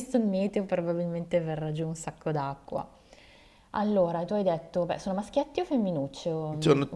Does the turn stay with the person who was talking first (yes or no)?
no